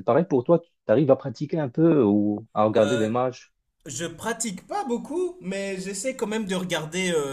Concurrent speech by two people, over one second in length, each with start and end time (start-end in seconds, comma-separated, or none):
none